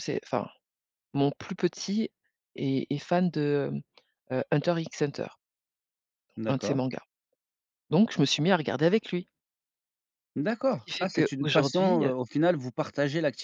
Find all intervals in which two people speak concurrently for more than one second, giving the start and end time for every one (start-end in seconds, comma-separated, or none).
10.7-12.1